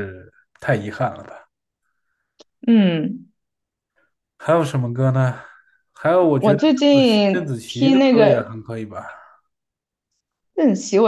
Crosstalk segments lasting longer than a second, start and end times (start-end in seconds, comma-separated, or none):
6.4-8.6